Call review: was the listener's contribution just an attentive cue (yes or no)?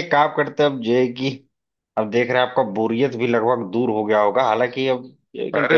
yes